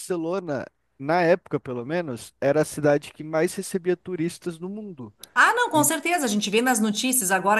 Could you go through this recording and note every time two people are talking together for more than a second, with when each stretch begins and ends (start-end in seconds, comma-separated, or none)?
none